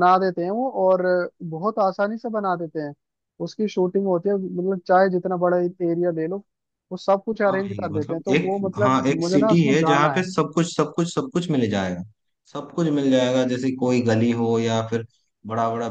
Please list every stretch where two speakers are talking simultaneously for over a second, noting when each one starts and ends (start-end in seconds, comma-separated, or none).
7.5-10.3